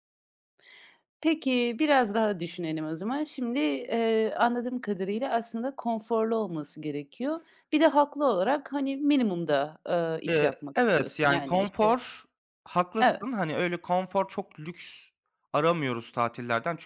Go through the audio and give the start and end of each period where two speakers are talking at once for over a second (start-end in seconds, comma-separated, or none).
10.3-12.0